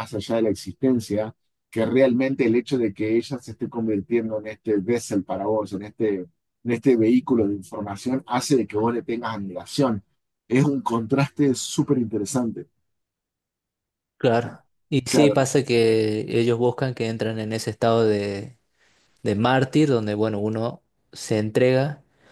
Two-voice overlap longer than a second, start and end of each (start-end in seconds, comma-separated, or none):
none